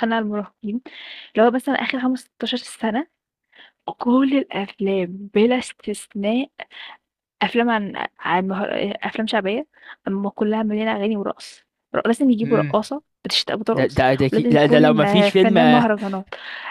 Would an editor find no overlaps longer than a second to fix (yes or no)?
no